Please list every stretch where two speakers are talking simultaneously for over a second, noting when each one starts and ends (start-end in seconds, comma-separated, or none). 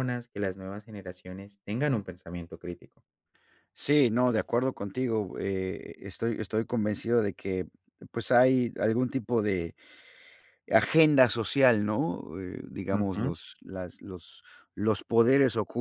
none